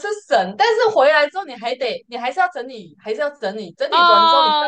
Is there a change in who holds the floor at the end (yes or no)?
yes